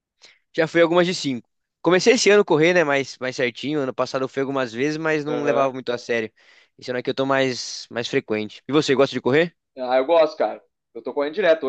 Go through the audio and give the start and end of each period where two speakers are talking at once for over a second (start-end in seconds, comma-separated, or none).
none